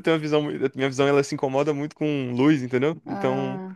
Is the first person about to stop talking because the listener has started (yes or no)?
no